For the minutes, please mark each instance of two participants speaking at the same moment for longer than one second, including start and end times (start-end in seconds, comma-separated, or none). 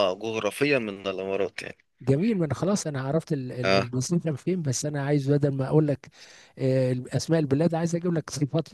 none